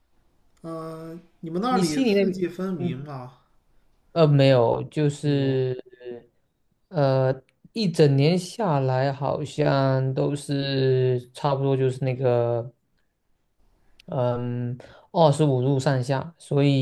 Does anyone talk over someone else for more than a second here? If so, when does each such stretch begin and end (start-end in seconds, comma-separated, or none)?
1.7-3.0